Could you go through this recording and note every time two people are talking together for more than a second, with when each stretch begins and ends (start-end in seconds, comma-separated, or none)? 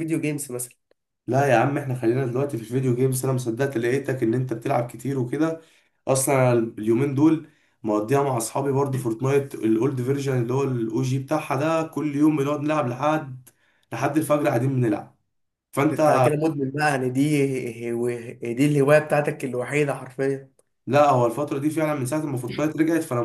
none